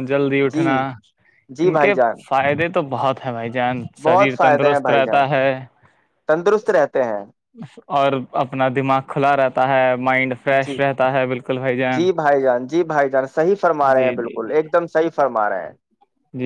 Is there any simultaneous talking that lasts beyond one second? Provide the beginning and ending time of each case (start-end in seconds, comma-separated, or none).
4.0-5.2